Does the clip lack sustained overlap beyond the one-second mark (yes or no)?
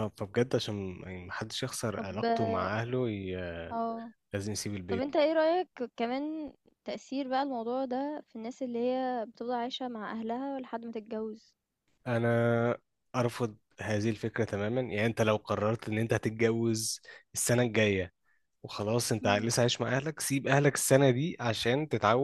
yes